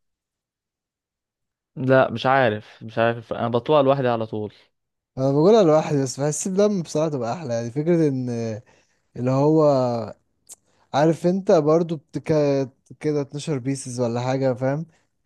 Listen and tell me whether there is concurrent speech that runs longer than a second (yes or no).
no